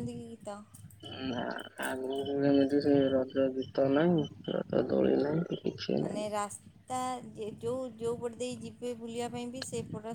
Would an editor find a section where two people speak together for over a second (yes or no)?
no